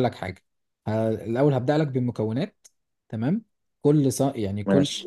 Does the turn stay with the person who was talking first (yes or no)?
yes